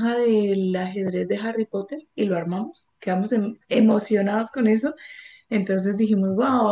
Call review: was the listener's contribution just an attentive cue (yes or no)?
yes